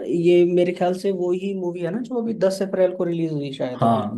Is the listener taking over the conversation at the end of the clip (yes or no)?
yes